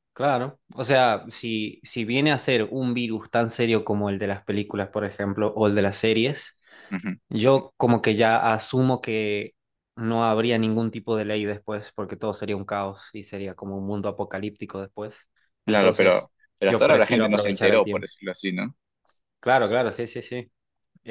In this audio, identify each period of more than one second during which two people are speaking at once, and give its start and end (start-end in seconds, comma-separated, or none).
15.7-18.1